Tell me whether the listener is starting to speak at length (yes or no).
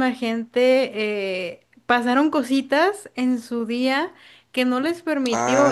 no